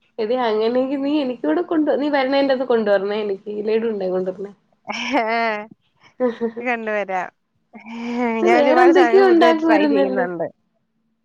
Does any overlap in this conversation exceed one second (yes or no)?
yes